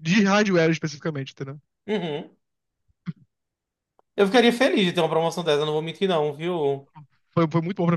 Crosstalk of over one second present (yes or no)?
no